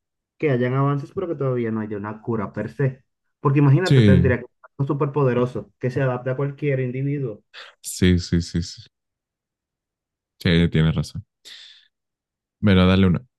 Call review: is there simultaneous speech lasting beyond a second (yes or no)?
no